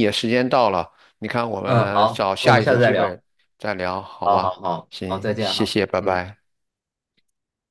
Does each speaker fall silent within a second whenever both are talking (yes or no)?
no